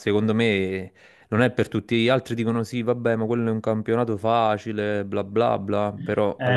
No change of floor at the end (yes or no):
no